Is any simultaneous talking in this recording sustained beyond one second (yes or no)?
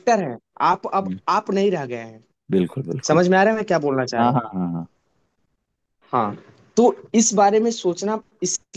no